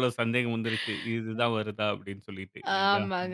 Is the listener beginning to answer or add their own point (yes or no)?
yes